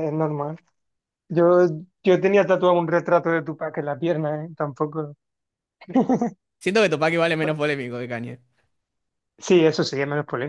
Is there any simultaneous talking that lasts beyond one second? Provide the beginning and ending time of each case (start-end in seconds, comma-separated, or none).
none